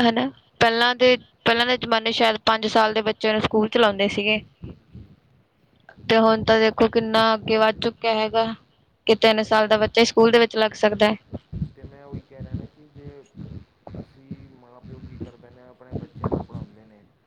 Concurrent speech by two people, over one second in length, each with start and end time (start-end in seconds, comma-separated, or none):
9.3-10.7